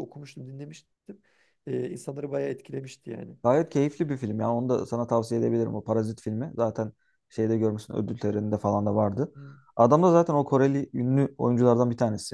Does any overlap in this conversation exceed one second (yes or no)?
no